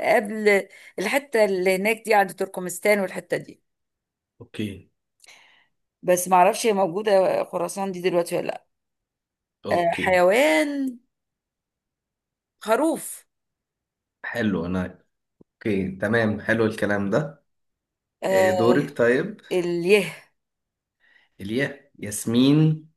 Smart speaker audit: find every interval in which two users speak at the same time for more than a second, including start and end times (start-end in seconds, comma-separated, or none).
none